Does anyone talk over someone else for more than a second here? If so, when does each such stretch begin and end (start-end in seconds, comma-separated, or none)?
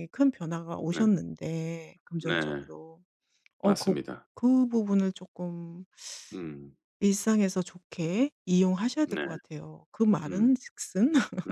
none